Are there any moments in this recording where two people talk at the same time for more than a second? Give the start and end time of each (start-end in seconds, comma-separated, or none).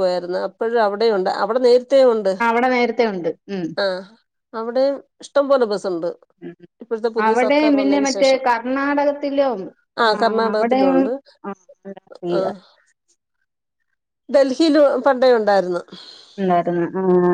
none